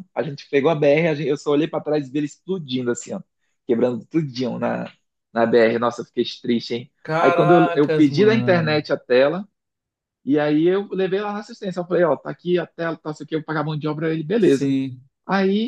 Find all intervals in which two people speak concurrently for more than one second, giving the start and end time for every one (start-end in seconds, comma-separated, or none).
7.0-8.9